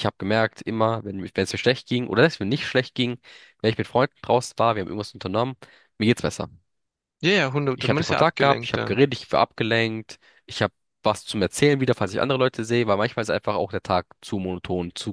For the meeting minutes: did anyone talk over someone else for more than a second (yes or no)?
yes